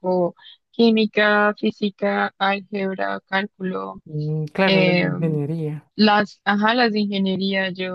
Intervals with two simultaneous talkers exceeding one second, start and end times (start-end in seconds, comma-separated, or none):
none